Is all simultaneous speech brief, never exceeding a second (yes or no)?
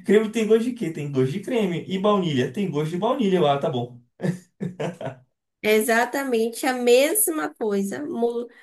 yes